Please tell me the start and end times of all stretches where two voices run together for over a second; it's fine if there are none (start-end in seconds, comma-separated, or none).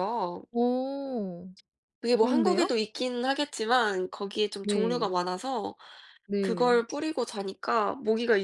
none